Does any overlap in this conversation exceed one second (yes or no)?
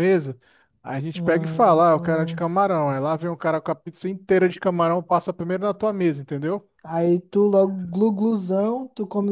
yes